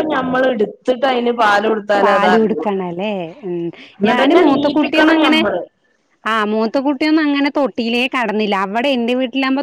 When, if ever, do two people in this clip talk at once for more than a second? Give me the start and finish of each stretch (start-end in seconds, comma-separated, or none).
4.1-5.4